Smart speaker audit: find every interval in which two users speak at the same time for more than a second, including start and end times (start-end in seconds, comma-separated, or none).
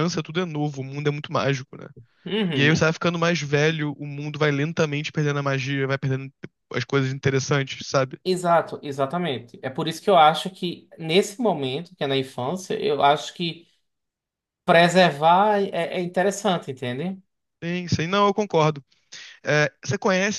none